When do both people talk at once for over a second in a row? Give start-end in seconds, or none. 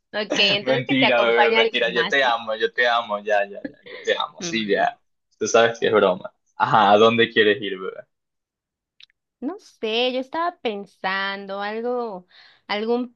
0.6-2.3